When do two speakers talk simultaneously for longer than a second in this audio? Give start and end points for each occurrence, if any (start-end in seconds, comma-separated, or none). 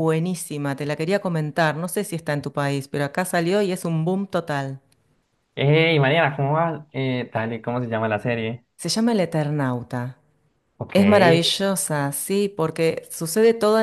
none